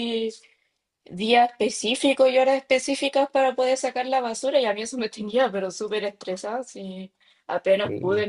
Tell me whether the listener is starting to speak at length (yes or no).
no